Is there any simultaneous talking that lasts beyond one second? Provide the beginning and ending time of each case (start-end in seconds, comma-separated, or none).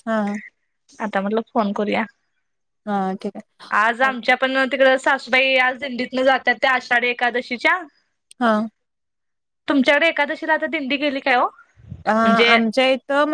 none